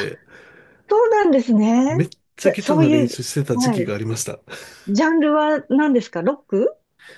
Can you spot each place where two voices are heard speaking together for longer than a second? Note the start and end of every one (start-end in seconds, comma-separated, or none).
2.4-4.0